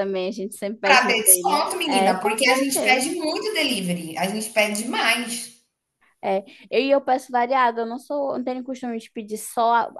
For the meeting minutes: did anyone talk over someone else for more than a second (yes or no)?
yes